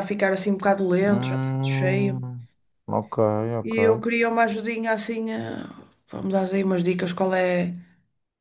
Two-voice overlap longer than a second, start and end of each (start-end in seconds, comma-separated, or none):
1.0-2.3